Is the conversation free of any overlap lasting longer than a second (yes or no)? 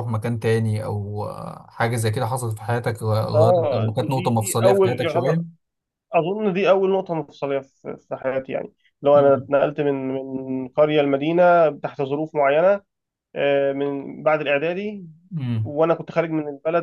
no